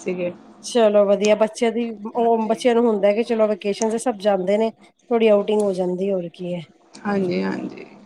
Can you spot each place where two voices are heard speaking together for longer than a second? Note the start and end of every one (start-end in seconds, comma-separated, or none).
none